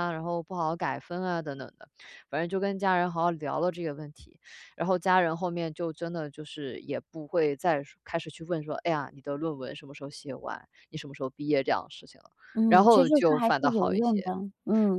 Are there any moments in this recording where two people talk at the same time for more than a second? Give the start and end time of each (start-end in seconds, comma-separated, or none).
12.7-14.3